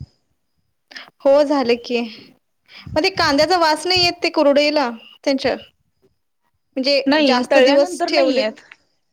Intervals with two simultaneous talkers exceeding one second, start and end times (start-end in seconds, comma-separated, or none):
7.1-8.6